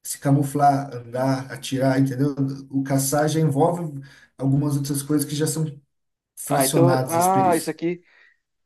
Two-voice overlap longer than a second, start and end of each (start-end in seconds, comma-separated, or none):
6.5-7.8